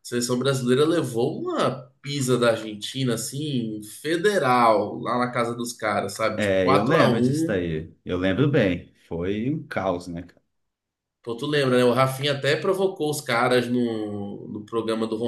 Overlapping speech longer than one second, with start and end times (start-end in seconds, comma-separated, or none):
6.4-7.6